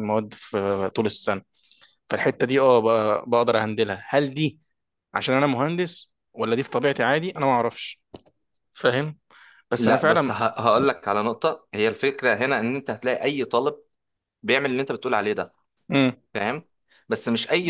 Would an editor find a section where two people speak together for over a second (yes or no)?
no